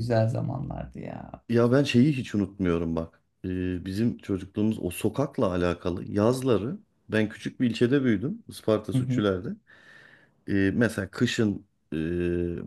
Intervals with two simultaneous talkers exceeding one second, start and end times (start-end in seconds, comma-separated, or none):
none